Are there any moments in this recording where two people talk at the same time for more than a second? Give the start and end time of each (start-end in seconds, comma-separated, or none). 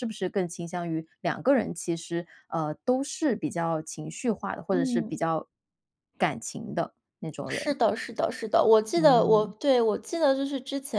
none